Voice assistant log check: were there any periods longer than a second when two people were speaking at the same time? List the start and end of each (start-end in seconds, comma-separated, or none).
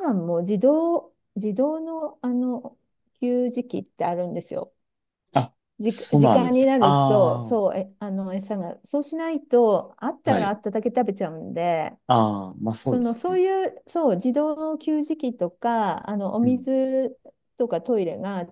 5.8-7.6